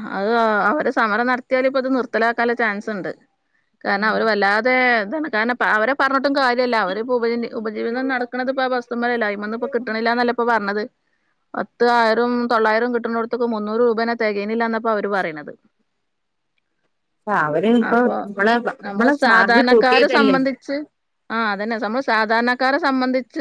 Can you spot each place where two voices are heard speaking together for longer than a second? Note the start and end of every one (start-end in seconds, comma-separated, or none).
18.9-20.3